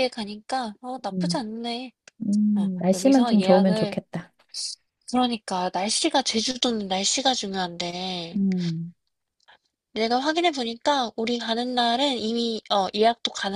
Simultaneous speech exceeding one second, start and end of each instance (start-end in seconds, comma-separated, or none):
2.5-4.0